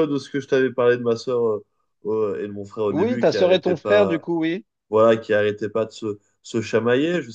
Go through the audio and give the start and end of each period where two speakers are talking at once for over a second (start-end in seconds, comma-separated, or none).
2.9-4.2